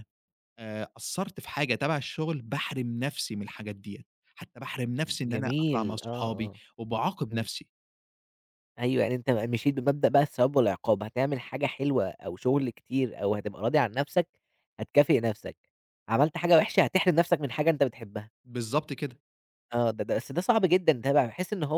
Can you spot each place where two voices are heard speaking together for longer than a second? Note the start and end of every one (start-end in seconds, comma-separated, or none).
5.2-6.6